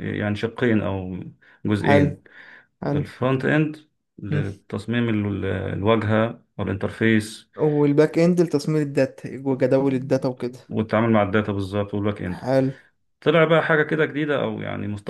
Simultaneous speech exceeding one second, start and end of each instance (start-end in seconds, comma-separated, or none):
none